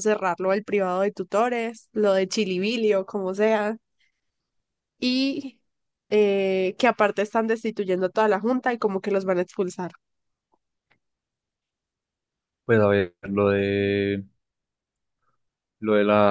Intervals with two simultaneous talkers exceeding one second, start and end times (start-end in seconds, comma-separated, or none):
none